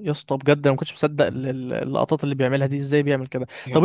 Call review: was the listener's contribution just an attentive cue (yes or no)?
yes